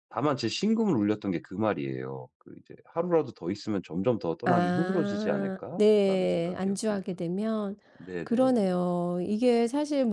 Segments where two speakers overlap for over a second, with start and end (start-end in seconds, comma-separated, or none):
4.4-7.2